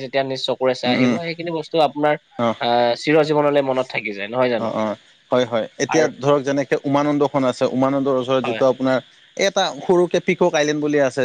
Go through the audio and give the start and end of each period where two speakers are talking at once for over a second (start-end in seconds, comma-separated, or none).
none